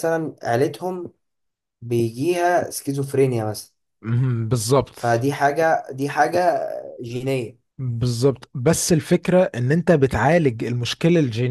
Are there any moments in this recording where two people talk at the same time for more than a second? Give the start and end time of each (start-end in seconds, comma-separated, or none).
none